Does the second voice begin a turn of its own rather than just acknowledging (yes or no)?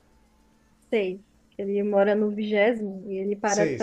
yes